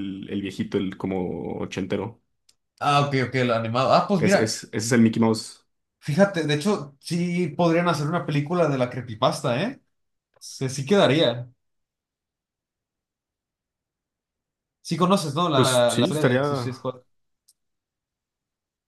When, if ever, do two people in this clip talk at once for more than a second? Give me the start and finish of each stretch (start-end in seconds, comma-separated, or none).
15.5-16.8